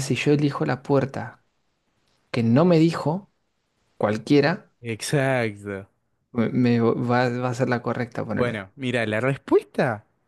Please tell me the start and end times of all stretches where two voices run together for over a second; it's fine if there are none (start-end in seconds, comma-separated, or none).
none